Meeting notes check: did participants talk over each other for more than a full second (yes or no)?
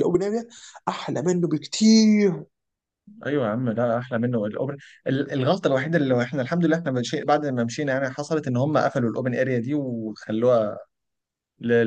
no